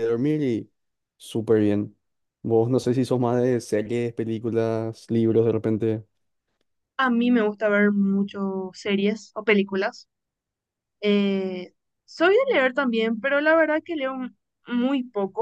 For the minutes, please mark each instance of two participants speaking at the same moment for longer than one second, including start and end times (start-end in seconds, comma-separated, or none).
none